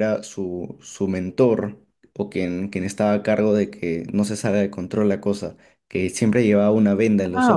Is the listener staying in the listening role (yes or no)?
no